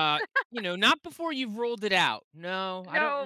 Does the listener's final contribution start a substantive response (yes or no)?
yes